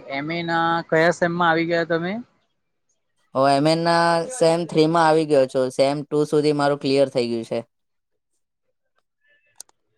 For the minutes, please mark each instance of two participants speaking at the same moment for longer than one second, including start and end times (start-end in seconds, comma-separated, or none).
none